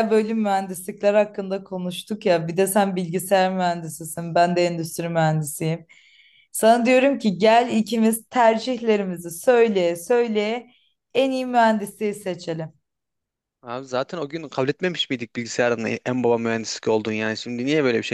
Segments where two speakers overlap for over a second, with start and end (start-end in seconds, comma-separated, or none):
none